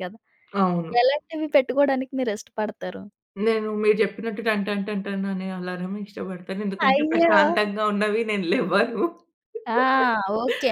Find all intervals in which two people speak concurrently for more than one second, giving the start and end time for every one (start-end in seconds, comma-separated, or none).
none